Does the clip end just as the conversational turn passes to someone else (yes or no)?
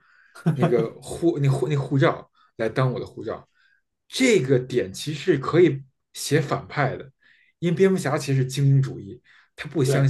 no